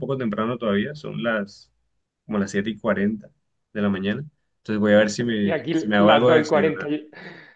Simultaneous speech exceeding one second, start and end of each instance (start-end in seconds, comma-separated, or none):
5.4-6.9